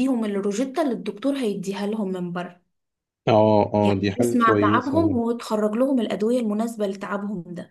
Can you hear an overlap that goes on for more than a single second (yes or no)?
yes